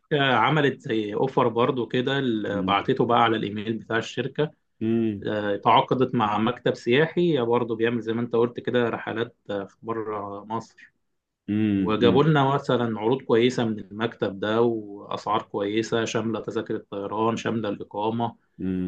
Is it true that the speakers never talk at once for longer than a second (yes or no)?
yes